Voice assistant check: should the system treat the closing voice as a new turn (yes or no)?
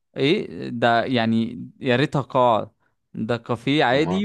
no